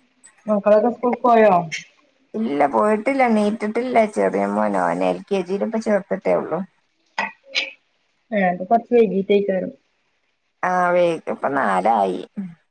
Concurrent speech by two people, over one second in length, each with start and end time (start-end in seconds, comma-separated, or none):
none